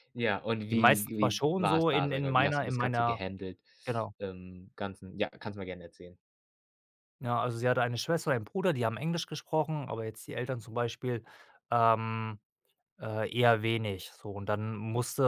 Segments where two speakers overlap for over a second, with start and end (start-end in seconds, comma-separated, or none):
0.7-3.2